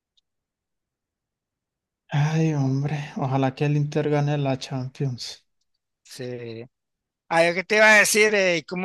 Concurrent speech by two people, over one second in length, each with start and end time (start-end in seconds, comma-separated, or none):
none